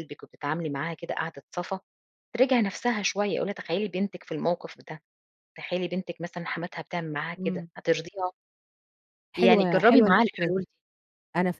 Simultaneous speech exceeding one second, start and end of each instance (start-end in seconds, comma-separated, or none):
9.3-10.7